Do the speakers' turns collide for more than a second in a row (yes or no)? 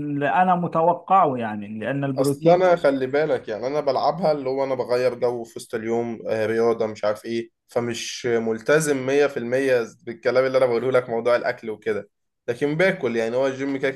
no